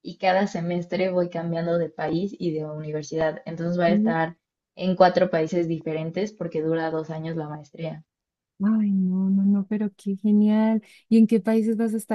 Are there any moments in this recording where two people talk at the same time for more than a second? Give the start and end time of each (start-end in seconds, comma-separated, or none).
none